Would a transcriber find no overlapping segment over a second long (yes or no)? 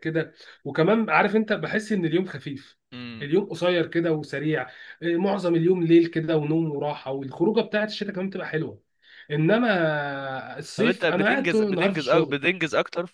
no